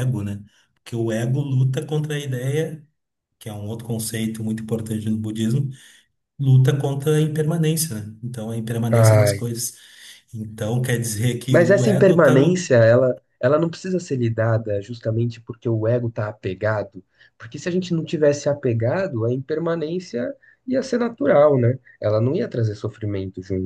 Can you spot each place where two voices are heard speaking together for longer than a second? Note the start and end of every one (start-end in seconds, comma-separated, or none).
11.5-12.7